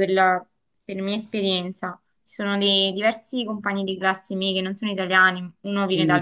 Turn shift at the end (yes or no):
yes